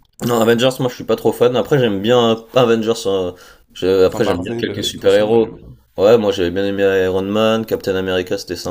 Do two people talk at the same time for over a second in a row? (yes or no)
yes